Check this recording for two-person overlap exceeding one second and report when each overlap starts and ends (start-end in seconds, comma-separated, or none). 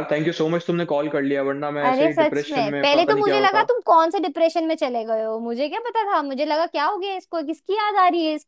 1.9-3.7